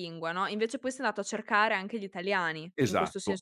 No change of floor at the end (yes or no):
no